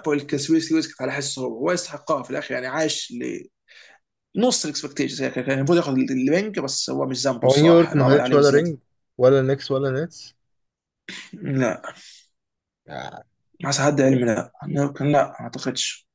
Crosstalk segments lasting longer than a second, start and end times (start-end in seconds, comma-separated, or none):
7.4-8.7